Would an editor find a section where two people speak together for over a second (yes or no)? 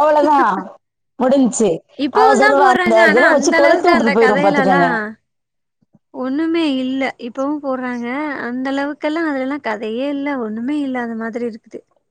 yes